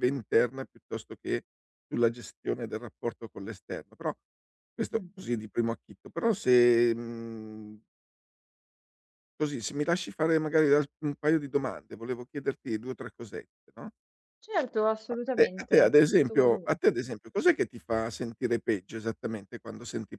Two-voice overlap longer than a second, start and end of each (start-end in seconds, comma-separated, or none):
15.1-16.8